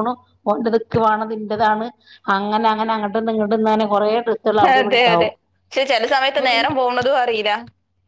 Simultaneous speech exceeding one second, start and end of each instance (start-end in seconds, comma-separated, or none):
none